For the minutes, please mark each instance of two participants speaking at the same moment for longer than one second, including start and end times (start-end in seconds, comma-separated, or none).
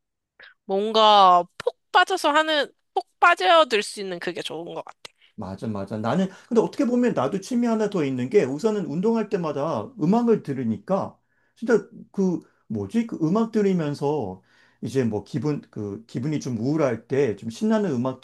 none